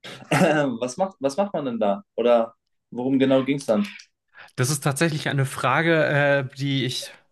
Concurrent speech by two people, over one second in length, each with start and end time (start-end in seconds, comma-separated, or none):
none